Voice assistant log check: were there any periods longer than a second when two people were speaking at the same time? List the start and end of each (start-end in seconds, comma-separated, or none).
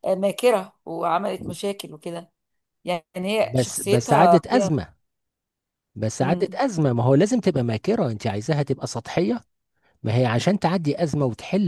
3.4-4.7